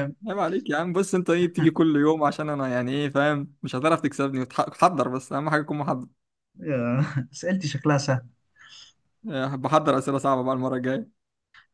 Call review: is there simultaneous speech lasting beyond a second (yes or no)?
no